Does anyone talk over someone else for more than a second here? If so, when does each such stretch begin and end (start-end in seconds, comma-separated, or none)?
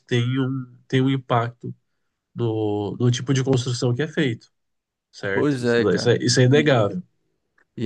5.3-6.9